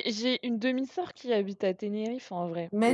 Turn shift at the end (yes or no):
no